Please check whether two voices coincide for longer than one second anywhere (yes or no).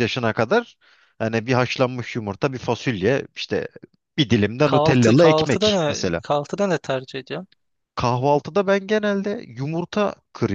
yes